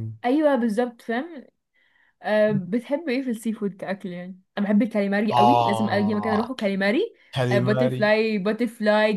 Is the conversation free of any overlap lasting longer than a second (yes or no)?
no